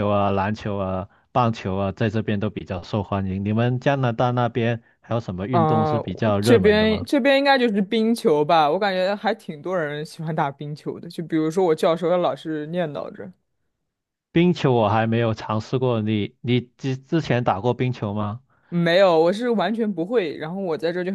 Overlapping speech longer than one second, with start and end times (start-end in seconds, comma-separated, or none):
5.5-7.1